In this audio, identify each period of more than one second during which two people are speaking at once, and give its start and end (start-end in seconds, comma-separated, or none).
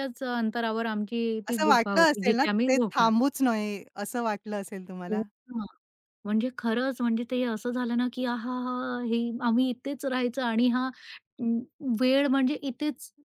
1.5-3.1